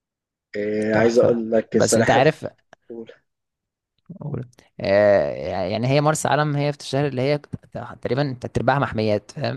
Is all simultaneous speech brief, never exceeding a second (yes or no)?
no